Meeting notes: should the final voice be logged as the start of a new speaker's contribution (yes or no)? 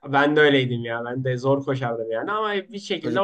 no